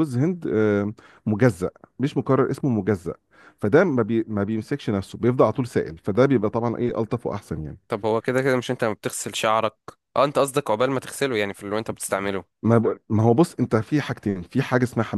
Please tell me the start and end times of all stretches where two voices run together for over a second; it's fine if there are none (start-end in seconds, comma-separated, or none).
none